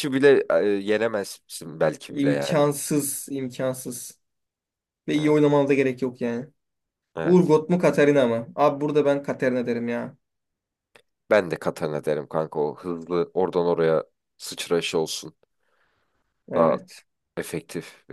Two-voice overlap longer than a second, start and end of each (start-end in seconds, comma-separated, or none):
none